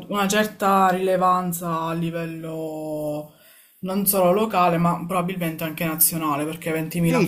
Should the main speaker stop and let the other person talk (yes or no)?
yes